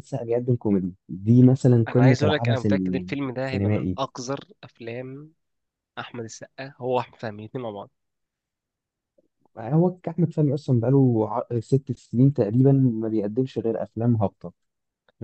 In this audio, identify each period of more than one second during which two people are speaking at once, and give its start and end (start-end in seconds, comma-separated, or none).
1.9-4.0